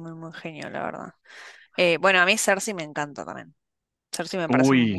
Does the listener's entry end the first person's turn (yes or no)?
yes